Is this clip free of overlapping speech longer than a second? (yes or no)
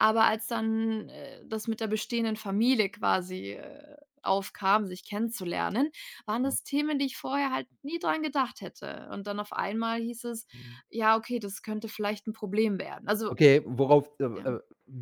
yes